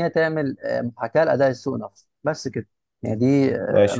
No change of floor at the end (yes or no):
no